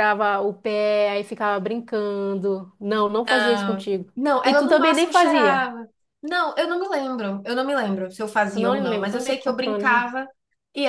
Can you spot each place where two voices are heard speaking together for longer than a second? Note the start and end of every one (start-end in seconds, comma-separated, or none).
3.3-5.7, 8.5-10.1